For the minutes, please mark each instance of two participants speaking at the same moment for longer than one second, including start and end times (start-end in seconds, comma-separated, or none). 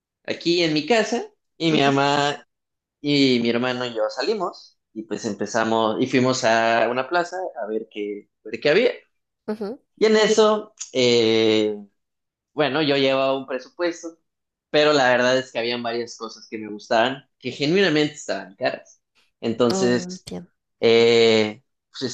none